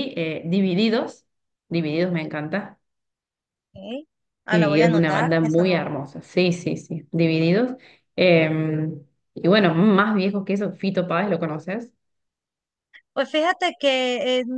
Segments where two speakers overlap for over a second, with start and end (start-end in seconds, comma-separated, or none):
4.5-5.9